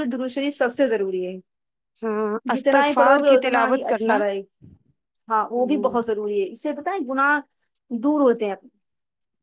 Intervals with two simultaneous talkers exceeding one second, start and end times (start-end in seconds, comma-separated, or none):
2.5-4.1